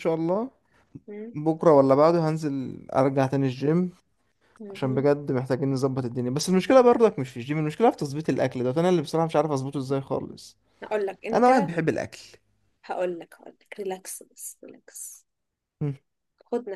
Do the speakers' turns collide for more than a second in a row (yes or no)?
no